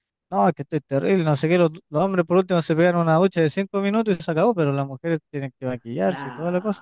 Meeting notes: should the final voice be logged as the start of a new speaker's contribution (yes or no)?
yes